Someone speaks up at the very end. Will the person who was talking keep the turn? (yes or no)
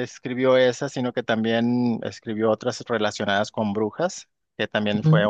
yes